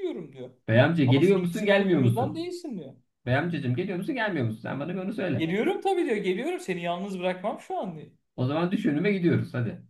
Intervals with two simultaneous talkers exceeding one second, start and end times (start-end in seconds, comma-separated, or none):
1.1-2.5